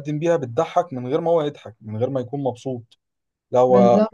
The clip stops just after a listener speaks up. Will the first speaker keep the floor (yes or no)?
yes